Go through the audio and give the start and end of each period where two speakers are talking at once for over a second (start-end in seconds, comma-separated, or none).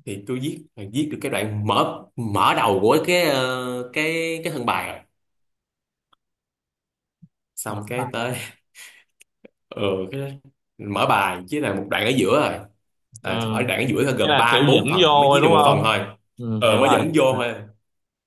14.2-15.9